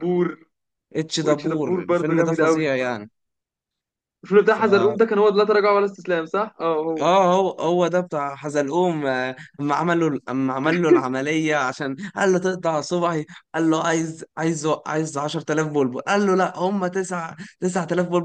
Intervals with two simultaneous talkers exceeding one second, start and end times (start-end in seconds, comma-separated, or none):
1.2-2.6